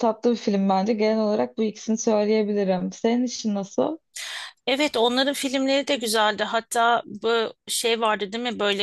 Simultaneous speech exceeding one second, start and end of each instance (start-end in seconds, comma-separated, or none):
none